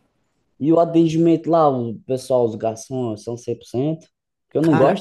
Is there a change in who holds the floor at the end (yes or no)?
no